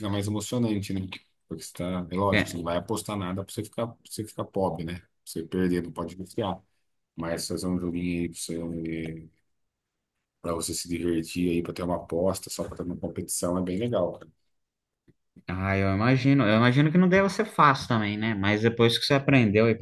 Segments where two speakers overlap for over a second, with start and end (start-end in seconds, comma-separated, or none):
none